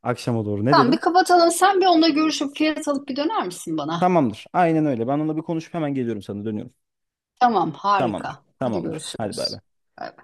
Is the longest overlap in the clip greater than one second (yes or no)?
yes